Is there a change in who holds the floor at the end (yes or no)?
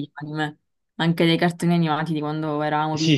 yes